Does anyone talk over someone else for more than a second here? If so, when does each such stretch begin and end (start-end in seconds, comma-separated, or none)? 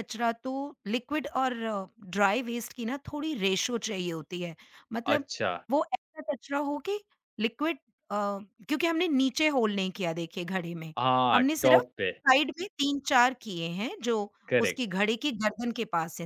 none